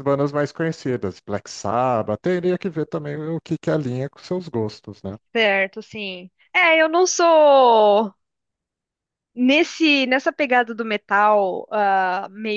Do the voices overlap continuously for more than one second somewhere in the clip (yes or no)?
no